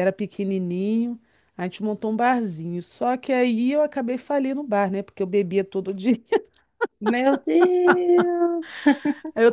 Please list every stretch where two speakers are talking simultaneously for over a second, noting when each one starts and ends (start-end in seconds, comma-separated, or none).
none